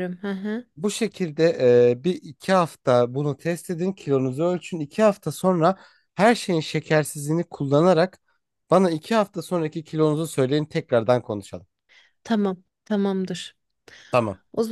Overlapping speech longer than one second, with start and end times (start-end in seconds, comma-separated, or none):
none